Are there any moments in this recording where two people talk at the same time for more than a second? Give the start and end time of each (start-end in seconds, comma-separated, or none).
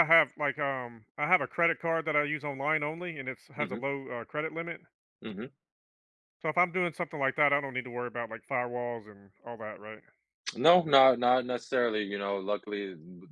none